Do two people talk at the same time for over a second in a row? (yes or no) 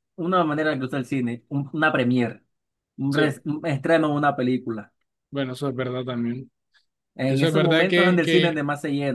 yes